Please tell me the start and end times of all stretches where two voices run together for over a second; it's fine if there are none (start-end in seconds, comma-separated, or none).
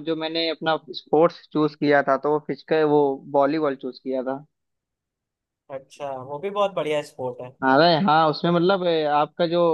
none